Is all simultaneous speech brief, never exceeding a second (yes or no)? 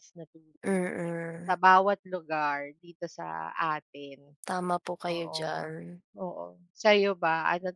yes